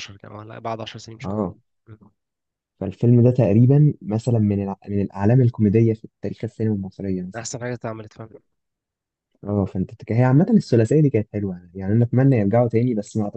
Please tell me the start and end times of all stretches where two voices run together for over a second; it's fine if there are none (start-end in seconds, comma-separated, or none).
none